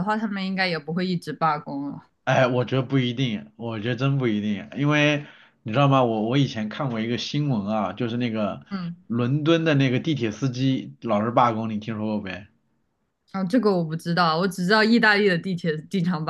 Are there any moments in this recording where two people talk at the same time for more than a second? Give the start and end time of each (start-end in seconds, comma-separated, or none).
none